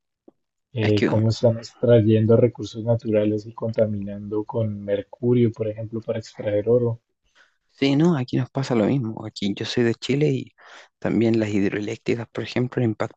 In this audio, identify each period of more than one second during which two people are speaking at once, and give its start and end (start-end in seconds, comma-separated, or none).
none